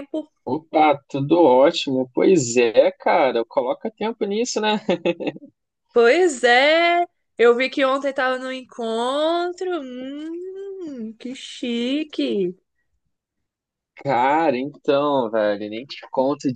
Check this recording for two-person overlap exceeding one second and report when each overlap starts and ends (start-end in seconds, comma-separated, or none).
none